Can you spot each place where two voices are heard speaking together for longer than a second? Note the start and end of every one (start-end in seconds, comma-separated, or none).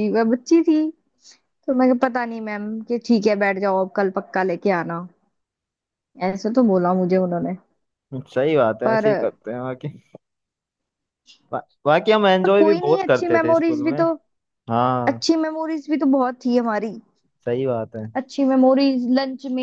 12.4-14.0